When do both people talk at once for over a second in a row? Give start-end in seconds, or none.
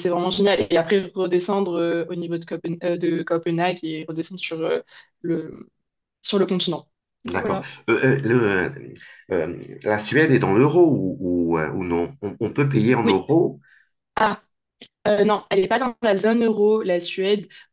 none